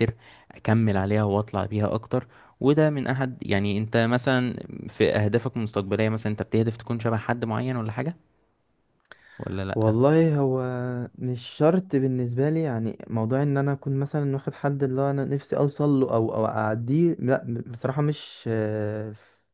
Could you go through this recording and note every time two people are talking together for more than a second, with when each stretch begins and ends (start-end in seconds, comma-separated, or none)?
none